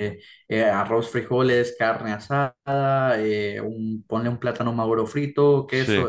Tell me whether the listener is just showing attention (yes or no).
yes